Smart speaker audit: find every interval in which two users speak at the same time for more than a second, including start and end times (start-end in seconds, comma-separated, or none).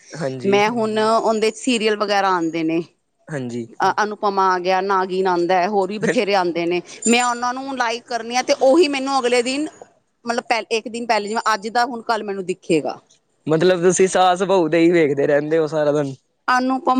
none